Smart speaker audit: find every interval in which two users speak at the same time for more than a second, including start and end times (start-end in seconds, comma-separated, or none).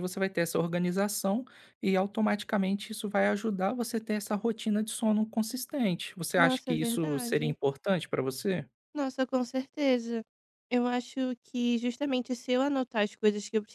6.4-7.6